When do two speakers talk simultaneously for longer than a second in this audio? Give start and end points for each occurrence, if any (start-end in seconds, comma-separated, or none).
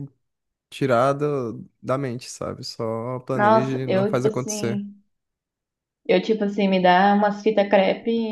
3.3-4.8